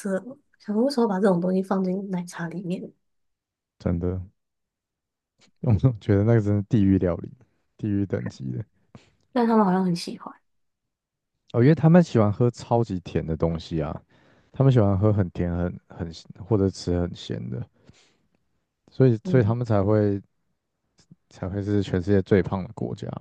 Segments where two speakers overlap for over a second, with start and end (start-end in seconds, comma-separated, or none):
none